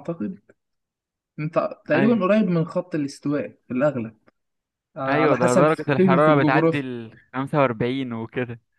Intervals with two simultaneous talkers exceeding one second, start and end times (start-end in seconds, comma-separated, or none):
5.1-6.8